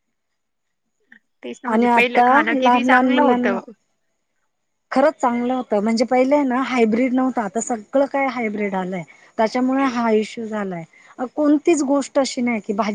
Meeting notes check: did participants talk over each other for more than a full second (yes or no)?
yes